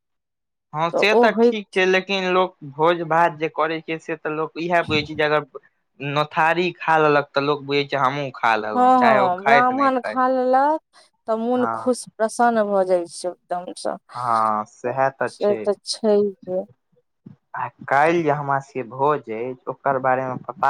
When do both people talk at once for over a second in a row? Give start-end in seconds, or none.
none